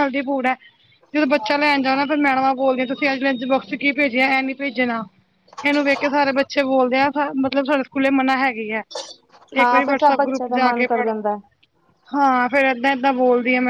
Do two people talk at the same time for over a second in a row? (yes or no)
yes